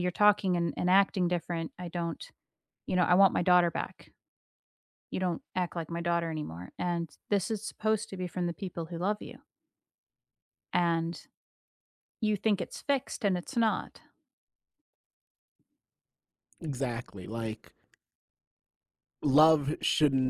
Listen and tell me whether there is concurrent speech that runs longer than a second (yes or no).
no